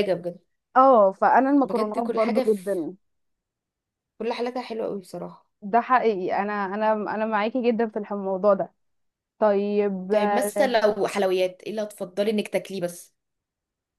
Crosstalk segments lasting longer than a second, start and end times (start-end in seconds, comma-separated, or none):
1.6-2.9